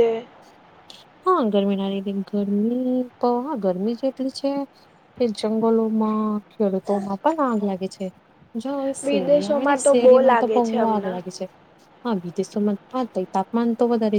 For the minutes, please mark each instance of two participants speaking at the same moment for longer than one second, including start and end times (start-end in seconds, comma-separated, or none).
9.1-11.2